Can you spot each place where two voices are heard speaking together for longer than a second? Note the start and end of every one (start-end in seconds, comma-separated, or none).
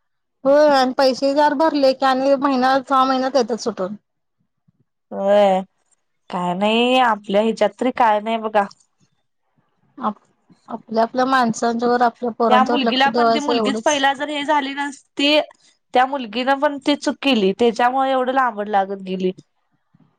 none